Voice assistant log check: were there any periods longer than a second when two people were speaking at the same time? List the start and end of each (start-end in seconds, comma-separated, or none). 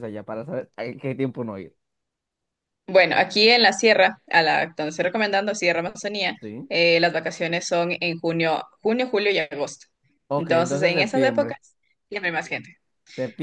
10.3-11.6